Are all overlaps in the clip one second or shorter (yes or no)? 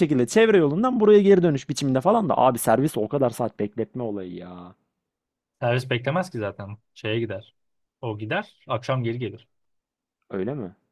yes